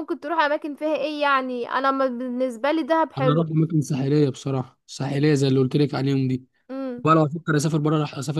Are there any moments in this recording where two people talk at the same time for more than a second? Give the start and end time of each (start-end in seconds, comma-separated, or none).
none